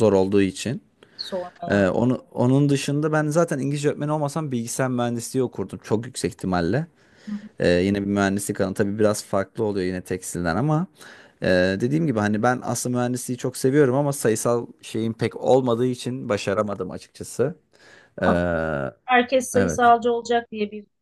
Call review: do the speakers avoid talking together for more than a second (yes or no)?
yes